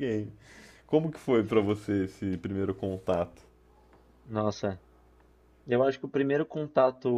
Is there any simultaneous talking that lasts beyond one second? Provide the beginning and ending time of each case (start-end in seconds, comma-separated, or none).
none